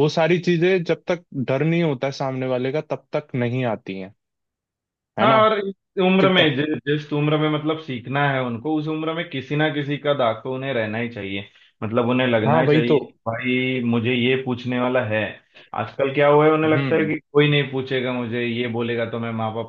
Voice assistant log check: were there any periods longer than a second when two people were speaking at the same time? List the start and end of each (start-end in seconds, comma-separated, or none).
none